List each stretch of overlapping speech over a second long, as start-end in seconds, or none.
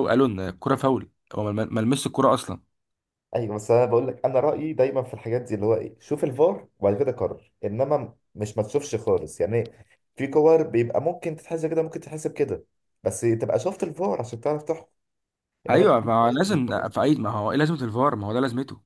15.7-17.0